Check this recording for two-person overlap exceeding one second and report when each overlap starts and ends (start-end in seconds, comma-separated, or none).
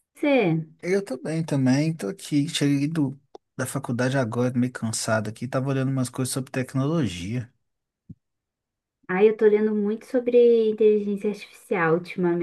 none